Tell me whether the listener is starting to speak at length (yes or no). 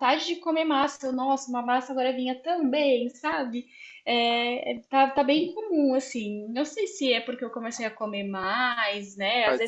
no